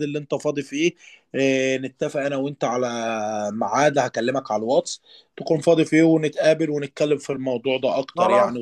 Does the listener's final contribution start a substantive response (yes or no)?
yes